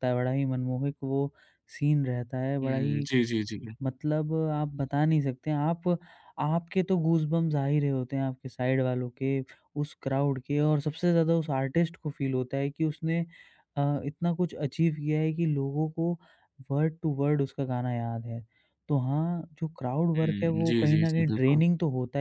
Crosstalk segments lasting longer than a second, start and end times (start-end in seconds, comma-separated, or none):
20.2-21.6